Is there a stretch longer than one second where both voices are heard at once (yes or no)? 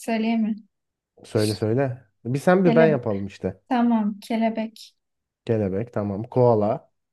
no